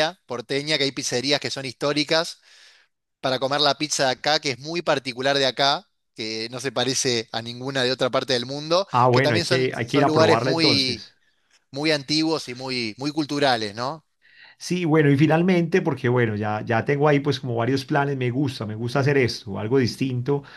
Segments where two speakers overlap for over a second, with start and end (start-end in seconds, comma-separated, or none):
8.9-11.1